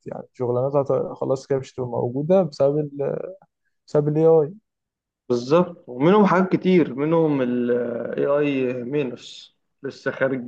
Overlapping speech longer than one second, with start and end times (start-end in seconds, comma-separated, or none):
none